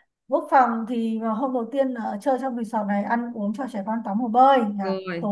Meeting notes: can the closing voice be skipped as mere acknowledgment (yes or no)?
yes